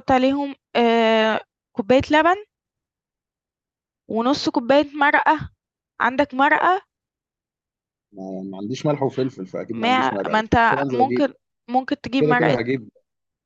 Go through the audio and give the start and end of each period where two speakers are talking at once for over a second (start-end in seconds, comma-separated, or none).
9.7-11.3